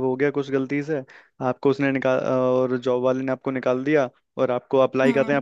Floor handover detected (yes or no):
no